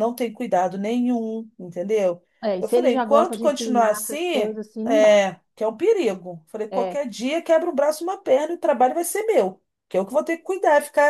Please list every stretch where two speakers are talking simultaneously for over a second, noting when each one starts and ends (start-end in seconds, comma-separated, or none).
2.6-5.2